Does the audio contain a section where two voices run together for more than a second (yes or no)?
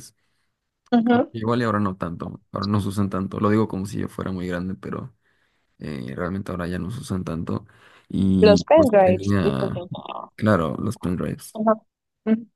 yes